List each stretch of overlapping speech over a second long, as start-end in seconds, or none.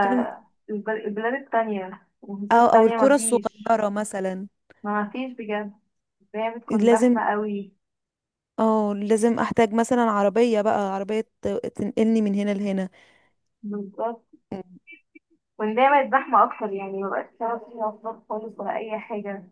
2.5-3.8